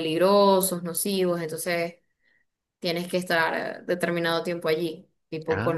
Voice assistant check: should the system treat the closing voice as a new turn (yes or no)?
no